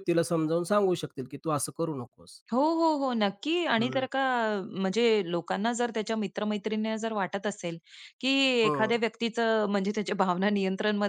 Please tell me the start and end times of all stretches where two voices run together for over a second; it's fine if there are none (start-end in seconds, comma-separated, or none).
none